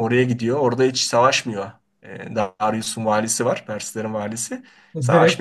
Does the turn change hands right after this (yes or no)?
yes